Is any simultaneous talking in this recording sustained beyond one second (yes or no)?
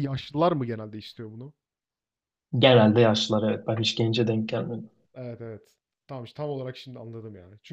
no